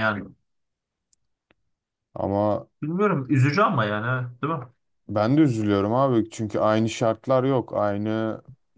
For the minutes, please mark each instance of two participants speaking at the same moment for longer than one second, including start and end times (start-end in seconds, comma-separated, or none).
none